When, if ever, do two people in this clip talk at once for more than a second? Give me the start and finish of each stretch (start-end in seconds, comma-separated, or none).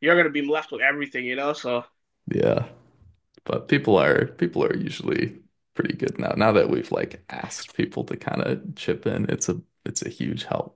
none